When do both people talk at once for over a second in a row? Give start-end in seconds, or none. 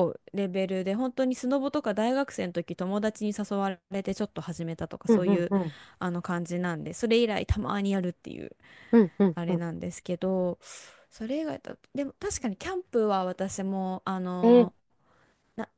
none